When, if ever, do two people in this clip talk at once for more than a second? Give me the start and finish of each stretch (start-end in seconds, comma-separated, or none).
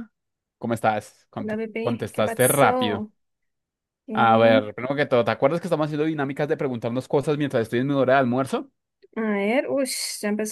1.4-3.1